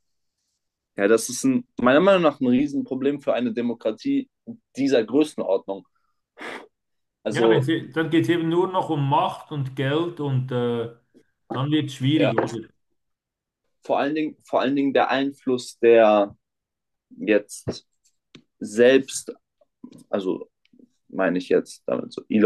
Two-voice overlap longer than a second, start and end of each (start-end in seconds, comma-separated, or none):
none